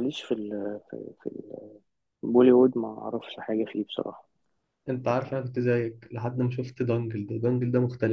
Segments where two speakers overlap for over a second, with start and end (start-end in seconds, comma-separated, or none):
none